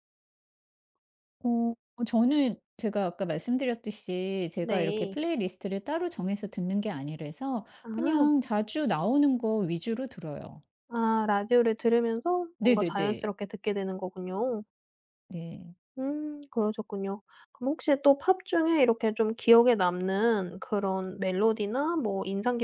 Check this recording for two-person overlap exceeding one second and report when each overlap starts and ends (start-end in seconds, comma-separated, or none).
none